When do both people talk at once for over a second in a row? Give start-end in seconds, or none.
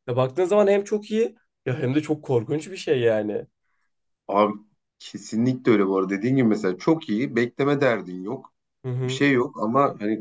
none